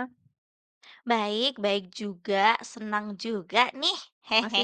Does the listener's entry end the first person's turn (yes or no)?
yes